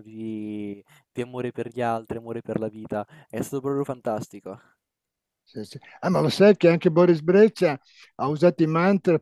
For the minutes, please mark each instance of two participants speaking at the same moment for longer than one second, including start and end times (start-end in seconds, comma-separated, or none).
none